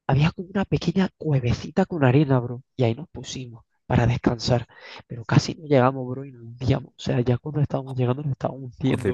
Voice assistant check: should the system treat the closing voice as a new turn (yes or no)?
yes